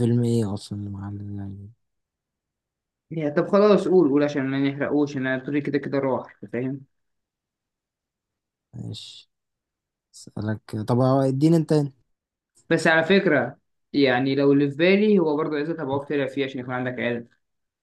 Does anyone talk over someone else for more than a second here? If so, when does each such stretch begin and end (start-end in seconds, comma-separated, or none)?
none